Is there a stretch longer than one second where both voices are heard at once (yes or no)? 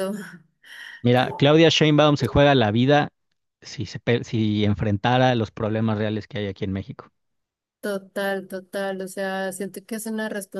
no